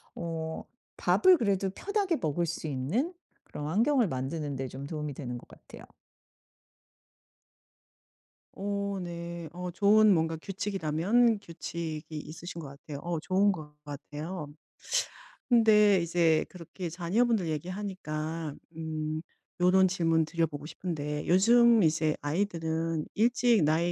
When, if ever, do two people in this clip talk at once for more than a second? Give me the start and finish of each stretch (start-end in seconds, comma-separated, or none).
none